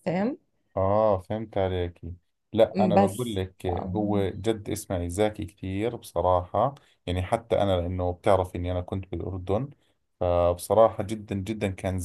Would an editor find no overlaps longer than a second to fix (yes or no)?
no